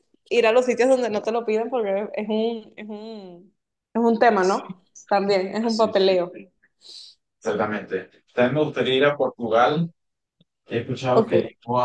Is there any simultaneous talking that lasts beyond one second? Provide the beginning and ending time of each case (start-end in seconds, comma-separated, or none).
none